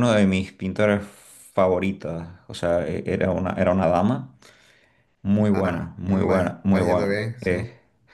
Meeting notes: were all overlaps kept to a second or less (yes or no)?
no